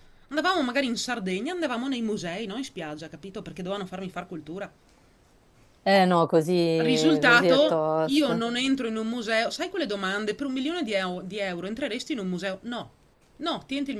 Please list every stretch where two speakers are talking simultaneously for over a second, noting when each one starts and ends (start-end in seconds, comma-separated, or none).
6.8-8.4